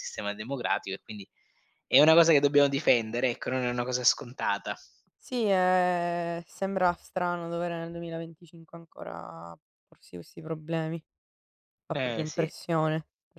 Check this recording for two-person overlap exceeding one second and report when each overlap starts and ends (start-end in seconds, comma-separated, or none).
none